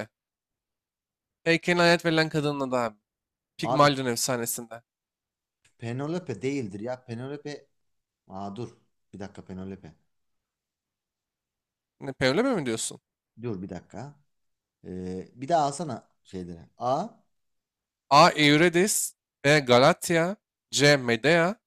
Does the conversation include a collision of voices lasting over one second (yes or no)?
no